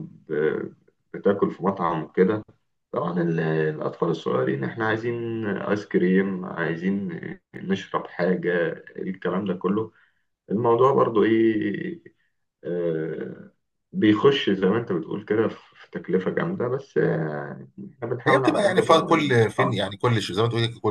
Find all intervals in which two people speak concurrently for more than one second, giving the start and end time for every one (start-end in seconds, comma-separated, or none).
18.3-19.8